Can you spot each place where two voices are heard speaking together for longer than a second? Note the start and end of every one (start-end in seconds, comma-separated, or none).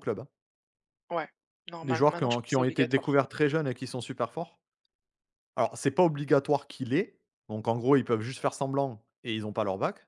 1.8-3.2